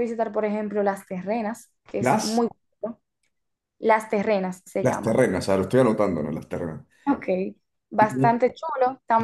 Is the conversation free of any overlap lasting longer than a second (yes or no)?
yes